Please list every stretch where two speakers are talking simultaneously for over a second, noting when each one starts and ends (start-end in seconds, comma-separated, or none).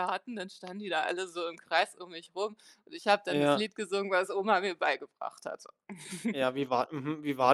none